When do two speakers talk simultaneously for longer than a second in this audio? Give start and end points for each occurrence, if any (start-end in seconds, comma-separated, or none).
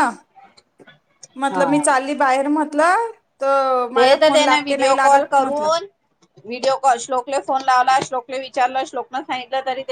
4.0-5.7